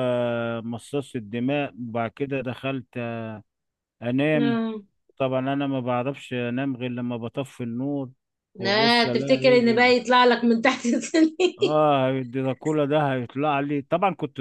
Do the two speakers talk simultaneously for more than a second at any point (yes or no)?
yes